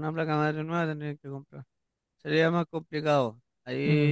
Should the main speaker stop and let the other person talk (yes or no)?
no